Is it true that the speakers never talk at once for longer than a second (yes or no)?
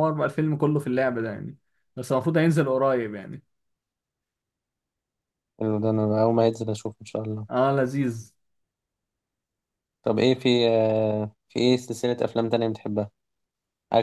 yes